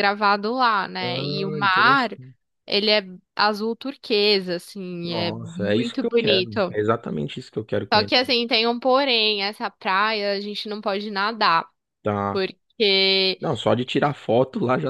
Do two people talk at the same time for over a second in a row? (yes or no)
yes